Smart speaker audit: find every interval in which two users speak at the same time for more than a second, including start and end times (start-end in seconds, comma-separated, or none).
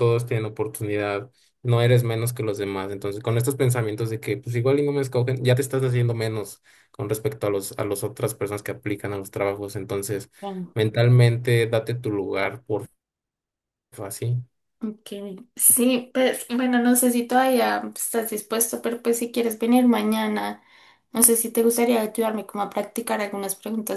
none